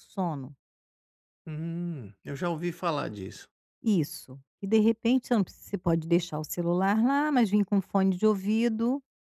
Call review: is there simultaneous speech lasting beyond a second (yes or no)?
no